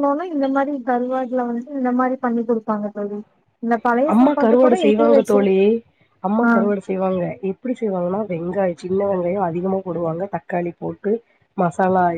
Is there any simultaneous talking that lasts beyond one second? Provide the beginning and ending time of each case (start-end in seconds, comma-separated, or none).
none